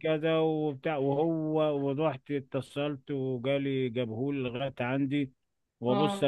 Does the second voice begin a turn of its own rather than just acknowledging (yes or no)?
no